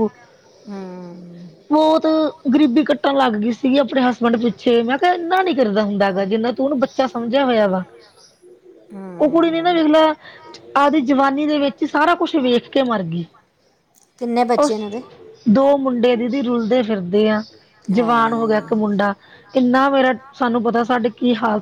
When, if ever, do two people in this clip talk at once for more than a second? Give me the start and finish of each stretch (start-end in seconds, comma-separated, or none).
none